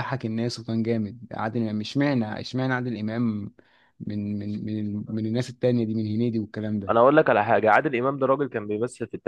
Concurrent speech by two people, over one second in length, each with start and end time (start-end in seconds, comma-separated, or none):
none